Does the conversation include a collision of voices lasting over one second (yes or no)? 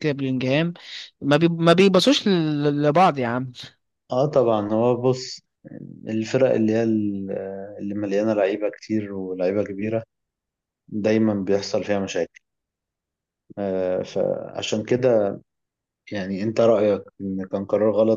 no